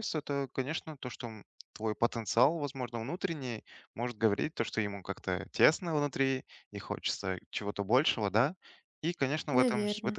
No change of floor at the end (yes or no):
yes